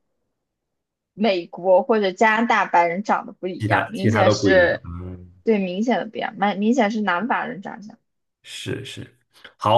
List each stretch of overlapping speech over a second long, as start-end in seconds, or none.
3.6-4.9